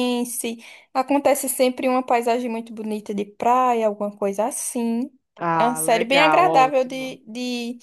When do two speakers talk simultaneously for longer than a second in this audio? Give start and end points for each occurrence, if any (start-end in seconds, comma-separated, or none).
5.6-7.2